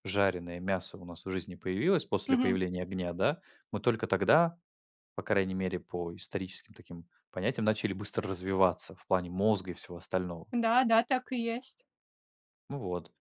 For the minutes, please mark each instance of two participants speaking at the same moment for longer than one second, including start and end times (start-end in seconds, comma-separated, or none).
none